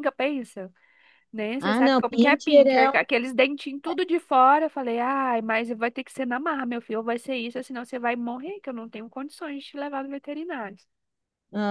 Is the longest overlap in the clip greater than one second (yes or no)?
yes